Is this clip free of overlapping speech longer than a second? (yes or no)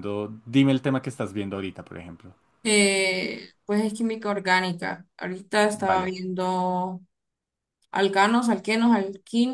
yes